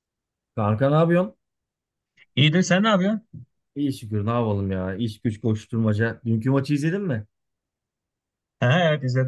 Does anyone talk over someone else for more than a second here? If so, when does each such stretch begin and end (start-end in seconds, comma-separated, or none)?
none